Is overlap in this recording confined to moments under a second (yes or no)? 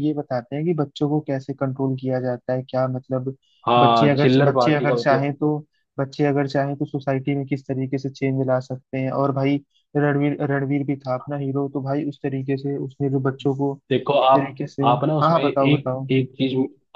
no